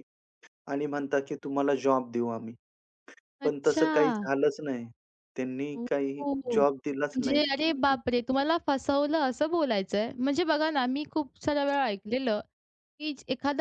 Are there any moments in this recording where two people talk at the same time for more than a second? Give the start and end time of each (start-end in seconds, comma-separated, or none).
5.8-7.4